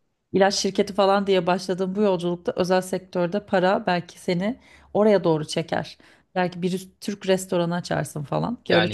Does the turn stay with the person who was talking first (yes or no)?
no